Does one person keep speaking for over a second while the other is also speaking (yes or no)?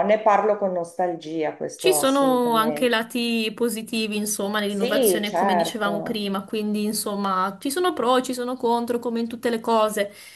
yes